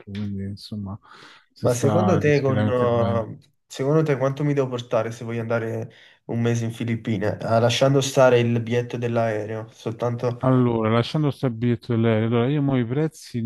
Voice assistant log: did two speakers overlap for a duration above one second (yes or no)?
yes